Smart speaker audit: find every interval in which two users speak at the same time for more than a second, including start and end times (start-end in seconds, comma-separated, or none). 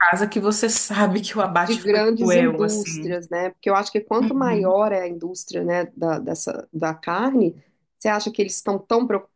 1.6-3.2